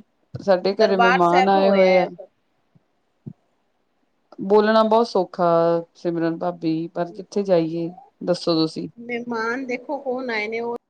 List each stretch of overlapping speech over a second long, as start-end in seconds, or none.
0.8-2.0